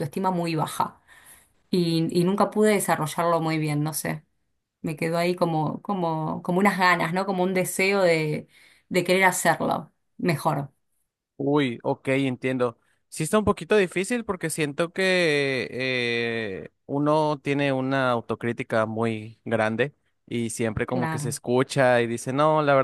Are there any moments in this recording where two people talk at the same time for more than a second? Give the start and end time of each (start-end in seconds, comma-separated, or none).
none